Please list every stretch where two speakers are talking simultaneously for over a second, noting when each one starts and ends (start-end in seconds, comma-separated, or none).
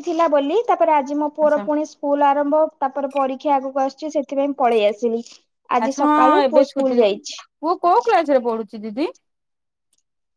5.8-7.3